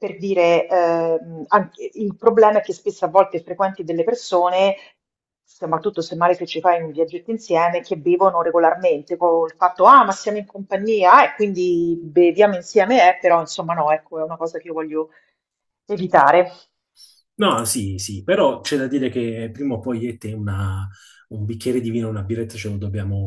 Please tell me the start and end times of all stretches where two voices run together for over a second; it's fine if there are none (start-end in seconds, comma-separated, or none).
none